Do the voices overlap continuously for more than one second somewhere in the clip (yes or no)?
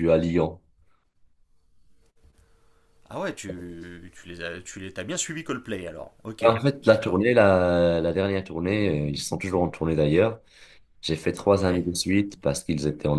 no